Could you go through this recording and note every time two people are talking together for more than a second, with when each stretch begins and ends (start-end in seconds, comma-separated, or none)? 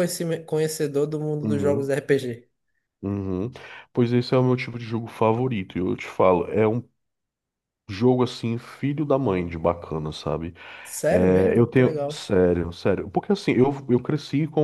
11.1-12.3